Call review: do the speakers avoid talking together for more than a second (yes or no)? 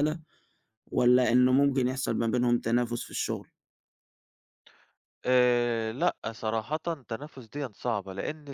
yes